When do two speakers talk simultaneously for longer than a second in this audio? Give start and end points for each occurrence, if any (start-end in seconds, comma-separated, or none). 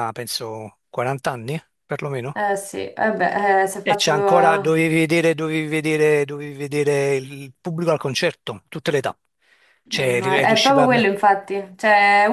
9.9-11.1